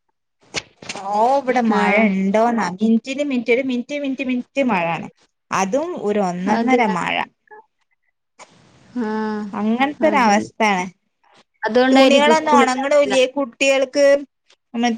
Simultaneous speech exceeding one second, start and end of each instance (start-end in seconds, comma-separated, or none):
11.9-13.2